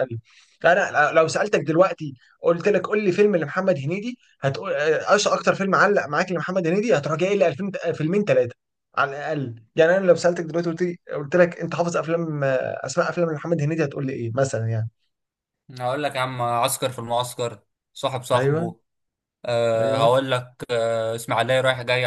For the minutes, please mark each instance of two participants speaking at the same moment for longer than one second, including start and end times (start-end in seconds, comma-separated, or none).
none